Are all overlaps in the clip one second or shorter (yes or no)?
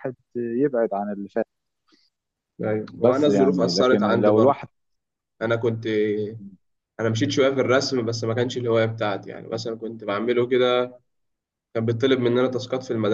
no